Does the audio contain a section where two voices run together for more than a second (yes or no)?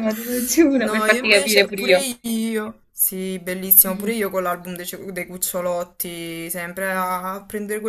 yes